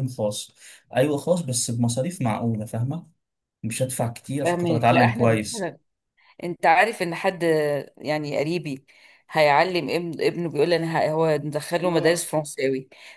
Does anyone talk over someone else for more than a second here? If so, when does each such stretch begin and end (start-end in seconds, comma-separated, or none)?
4.4-5.8